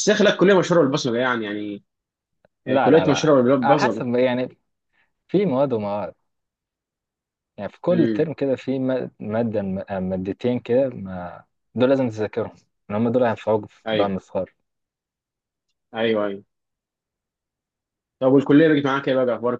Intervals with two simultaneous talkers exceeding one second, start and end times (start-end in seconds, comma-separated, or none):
2.7-4.0